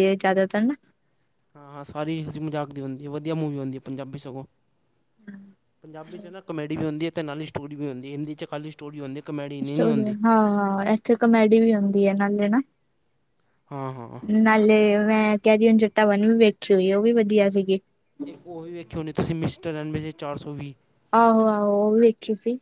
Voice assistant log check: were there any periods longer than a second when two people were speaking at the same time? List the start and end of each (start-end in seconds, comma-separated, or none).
none